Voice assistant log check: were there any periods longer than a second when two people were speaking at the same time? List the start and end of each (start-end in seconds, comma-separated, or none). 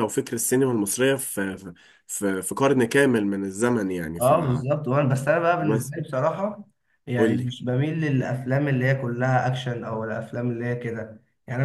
none